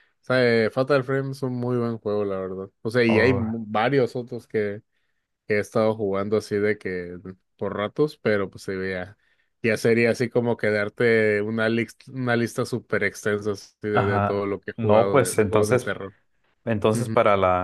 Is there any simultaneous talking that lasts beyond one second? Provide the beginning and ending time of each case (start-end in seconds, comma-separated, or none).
13.9-15.9